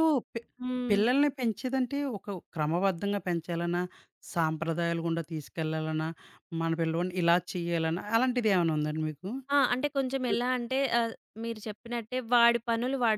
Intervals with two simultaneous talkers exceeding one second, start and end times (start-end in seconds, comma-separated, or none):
none